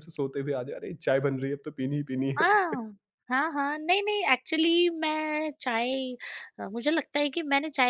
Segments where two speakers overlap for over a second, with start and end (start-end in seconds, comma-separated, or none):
none